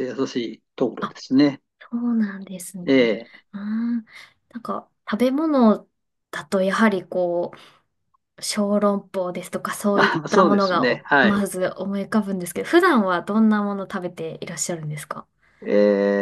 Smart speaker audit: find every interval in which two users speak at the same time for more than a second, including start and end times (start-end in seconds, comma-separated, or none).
9.9-11.4